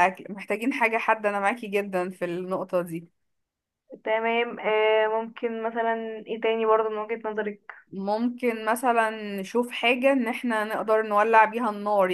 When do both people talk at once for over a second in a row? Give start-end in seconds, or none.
none